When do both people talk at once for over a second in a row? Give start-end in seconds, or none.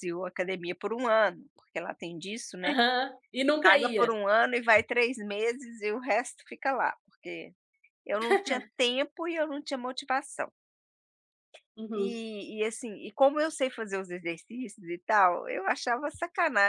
none